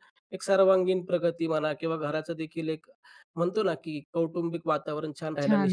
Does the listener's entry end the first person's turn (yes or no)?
no